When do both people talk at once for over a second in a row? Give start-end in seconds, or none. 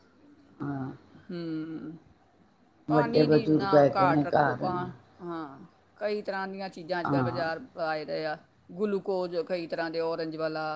2.9-4.6